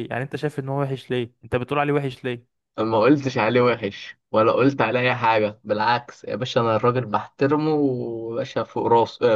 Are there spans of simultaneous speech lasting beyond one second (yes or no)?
no